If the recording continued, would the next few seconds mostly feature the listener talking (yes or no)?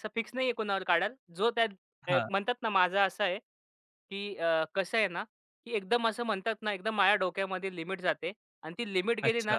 no